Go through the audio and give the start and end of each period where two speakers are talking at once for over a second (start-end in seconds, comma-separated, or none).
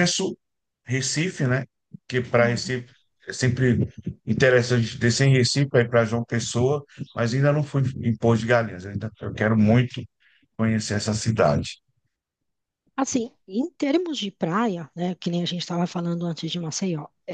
none